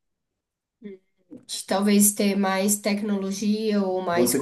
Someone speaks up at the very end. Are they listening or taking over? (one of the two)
taking over